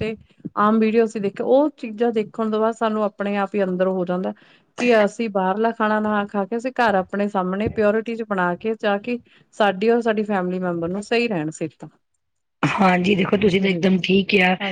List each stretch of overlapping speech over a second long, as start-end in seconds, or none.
none